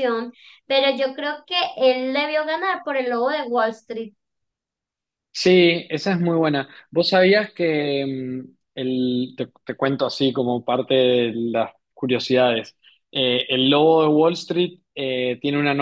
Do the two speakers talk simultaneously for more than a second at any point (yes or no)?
no